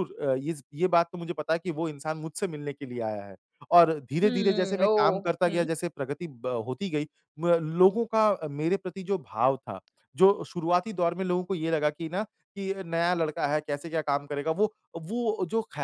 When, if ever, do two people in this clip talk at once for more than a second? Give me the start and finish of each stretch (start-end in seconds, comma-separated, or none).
4.2-5.7